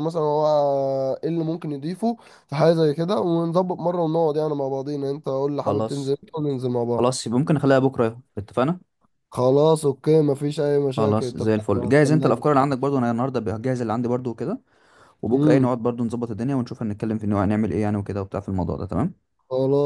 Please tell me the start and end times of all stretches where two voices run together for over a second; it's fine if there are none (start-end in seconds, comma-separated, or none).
11.0-12.4